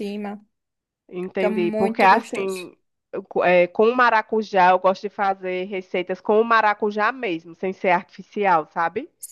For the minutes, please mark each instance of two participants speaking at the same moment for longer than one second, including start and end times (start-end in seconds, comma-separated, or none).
1.3-2.7